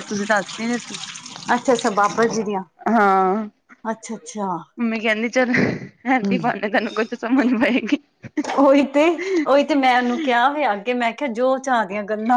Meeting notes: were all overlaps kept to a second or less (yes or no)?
yes